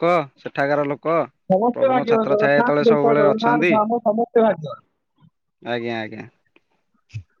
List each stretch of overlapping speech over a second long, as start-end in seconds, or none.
1.7-3.7